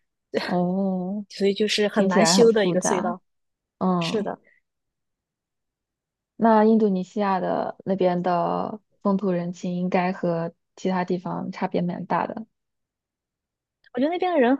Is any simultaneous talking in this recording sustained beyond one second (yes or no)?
yes